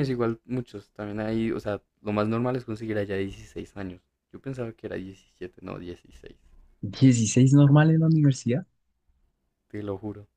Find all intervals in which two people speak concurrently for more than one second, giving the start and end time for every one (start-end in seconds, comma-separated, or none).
none